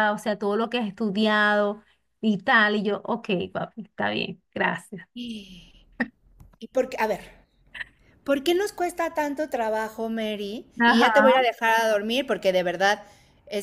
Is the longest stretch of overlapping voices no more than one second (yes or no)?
yes